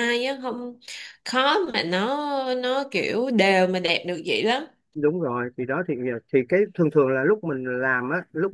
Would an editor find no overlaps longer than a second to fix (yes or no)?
yes